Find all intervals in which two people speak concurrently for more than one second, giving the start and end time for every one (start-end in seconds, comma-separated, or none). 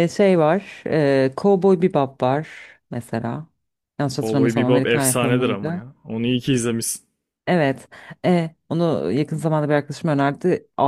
4.2-5.8